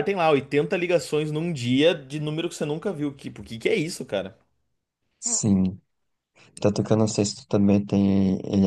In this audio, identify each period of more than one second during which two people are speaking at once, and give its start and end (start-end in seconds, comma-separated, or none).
none